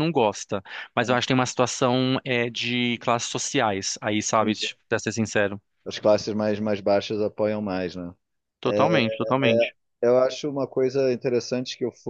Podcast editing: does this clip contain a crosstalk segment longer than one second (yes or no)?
no